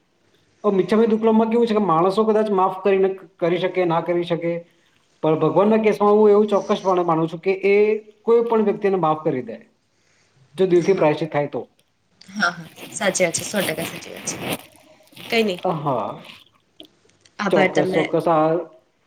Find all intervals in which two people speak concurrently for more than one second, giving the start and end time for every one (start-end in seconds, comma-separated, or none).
none